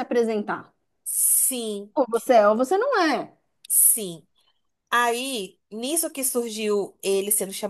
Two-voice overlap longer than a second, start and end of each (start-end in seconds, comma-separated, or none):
none